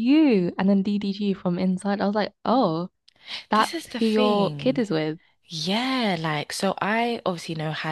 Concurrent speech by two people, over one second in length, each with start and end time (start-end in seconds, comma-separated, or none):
3.5-4.8